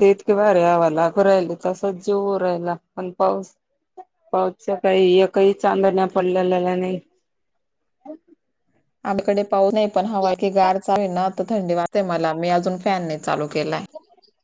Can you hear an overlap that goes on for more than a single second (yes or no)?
no